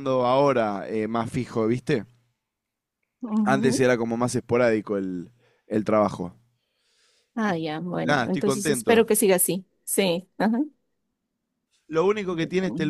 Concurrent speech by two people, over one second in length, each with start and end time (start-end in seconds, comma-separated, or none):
7.5-9.1